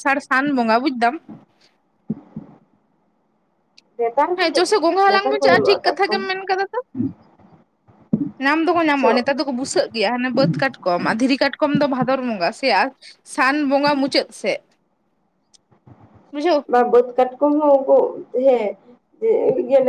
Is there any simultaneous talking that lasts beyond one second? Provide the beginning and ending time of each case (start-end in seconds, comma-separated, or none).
4.4-6.2